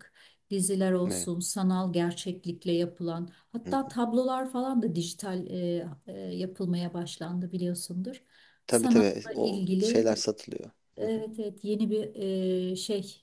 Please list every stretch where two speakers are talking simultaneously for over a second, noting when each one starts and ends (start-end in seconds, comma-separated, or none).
8.7-10.1